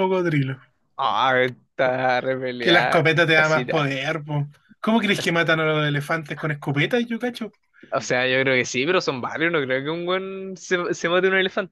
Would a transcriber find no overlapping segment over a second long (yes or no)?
no